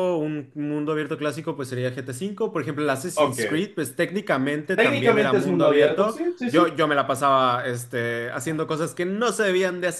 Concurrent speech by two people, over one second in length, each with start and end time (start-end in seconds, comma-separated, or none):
4.8-6.8